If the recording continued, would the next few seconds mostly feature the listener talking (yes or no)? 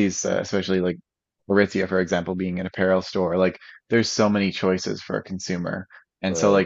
no